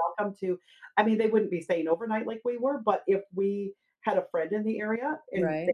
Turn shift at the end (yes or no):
no